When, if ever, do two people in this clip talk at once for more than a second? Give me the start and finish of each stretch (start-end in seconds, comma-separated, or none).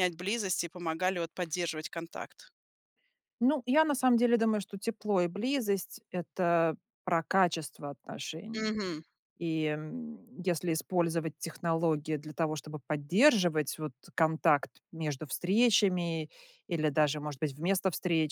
none